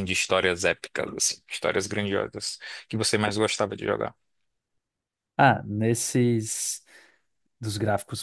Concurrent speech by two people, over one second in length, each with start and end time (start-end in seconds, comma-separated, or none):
none